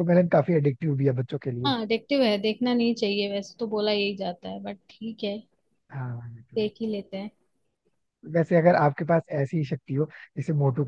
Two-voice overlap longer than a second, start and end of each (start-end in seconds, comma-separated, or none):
none